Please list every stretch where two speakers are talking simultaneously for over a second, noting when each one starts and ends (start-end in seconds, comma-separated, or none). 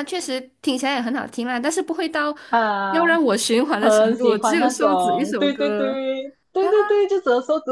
3.8-6.0